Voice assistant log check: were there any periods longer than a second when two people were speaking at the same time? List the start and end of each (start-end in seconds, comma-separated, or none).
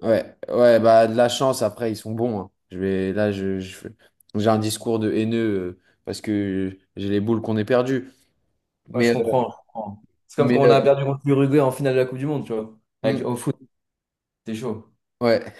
none